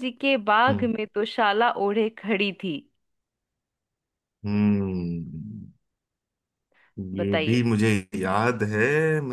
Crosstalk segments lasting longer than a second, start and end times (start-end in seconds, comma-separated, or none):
none